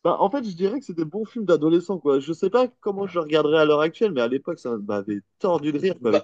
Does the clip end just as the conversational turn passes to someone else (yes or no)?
yes